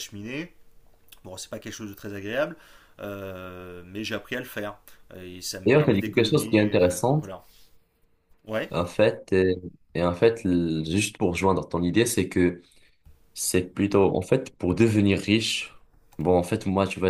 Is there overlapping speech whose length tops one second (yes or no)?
yes